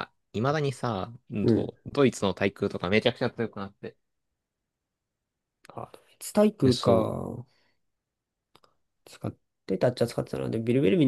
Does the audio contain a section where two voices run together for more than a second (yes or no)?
no